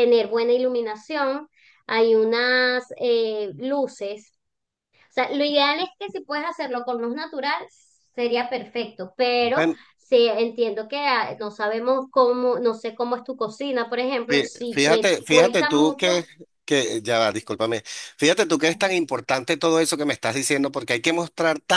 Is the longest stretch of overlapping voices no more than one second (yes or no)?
no